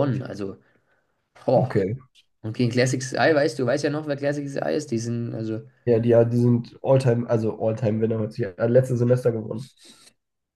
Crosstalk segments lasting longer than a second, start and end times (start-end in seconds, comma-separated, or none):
none